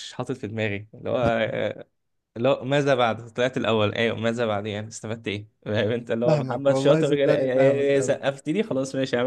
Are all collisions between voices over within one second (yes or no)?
no